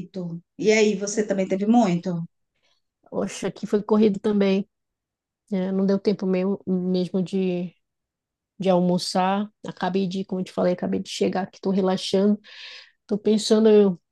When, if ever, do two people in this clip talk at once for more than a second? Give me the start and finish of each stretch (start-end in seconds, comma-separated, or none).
none